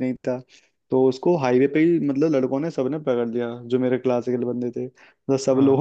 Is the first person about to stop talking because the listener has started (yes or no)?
no